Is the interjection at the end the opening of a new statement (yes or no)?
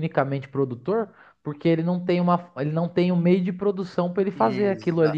yes